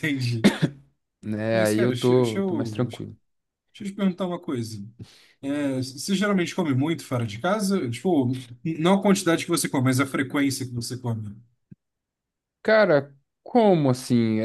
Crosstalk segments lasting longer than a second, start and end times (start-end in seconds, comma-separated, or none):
1.5-3.0